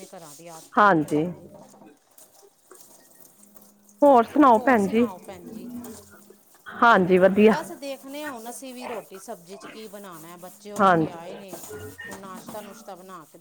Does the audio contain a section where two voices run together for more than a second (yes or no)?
no